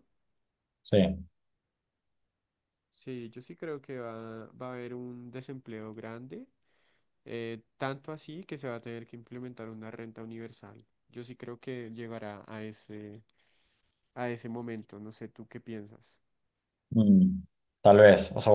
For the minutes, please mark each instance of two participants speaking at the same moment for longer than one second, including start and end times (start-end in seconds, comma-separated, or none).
none